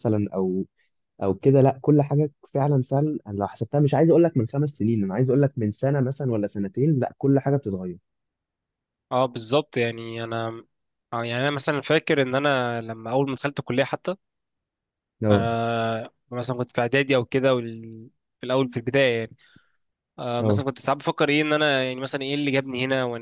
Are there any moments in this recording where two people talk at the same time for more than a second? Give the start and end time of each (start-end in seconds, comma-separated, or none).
none